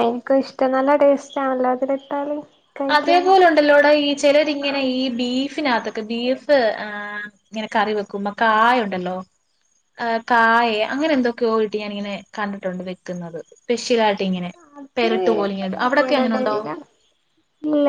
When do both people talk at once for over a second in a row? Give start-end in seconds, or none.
none